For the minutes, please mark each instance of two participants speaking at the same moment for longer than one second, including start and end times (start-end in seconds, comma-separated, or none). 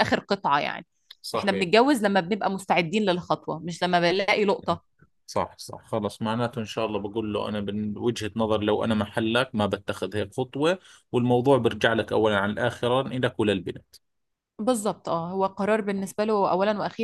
none